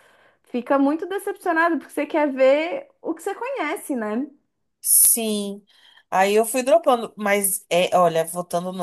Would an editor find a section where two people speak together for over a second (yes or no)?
no